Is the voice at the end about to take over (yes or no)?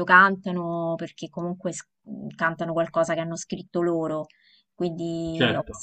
no